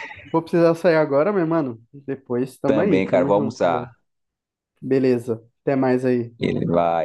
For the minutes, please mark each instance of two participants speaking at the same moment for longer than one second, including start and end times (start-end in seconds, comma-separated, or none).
2.6-3.9